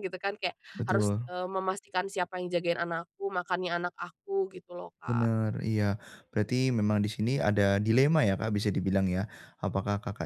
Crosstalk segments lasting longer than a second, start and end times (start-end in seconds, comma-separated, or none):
none